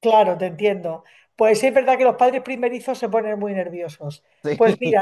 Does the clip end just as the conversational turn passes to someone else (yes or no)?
no